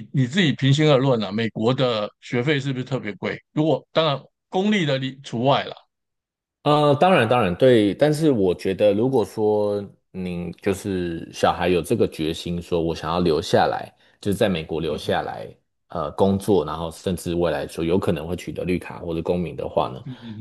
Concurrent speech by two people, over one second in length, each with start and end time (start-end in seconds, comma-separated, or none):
none